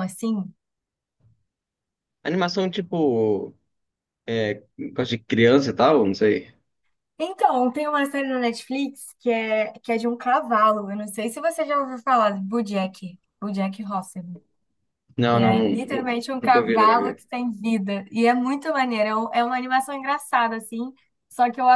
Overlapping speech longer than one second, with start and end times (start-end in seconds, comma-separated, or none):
15.3-17.2